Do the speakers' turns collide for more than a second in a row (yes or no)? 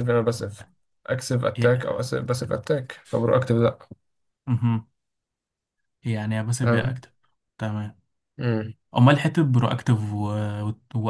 no